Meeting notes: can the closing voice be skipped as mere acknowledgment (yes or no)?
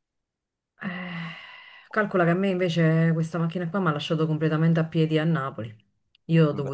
yes